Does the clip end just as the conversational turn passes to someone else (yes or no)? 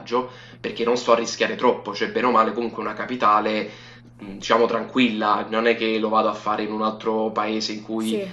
no